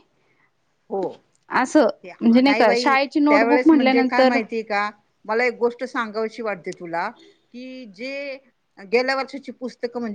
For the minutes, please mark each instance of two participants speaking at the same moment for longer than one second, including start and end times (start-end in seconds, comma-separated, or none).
2.0-4.4